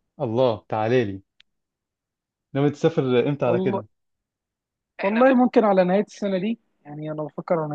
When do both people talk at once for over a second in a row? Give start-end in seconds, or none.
none